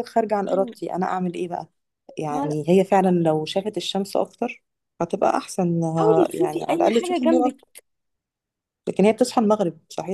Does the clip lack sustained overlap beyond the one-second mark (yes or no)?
no